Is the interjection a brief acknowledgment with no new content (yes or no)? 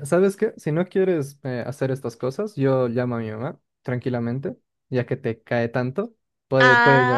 no